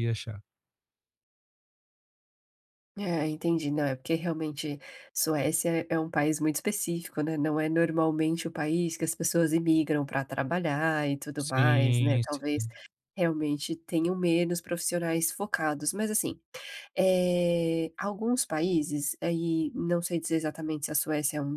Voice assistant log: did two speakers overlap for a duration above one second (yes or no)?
yes